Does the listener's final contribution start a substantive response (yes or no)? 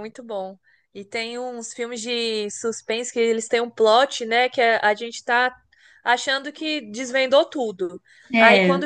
no